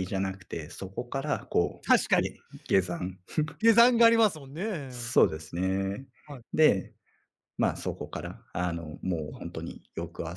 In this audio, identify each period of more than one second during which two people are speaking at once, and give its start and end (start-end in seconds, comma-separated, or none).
none